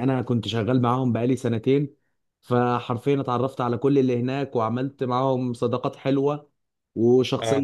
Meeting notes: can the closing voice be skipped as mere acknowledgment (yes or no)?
yes